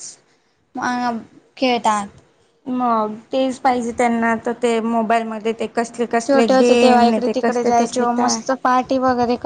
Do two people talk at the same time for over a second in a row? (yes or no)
yes